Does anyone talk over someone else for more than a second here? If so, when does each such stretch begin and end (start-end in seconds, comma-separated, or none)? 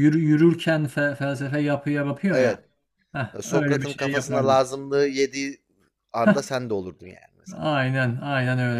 3.4-4.7